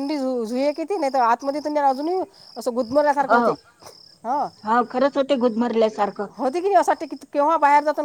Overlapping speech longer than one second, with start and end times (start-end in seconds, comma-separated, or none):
none